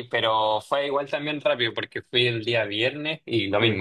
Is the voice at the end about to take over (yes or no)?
no